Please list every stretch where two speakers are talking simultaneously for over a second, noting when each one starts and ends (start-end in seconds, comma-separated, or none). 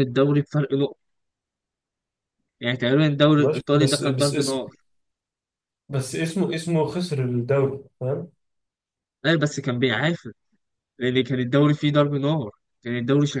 3.4-4.6